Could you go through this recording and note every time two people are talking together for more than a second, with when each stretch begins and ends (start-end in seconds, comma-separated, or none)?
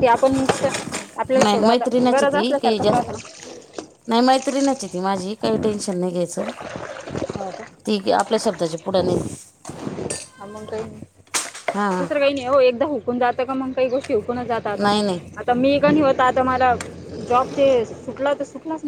1.4-3.0